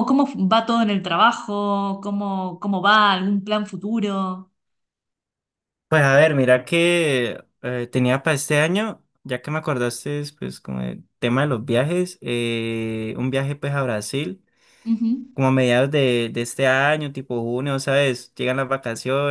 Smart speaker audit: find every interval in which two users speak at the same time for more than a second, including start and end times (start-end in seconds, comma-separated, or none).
none